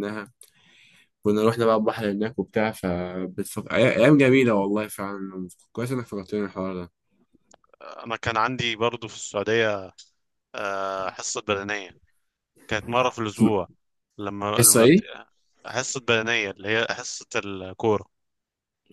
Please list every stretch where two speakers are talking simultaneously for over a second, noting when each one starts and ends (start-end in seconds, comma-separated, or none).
none